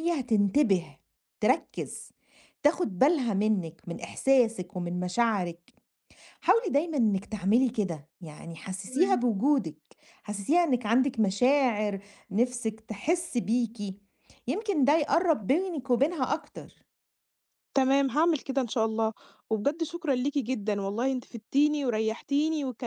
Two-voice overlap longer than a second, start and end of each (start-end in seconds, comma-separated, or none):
none